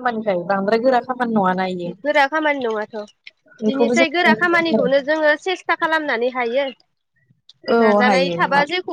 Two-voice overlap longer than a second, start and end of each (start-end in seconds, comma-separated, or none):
3.7-5.1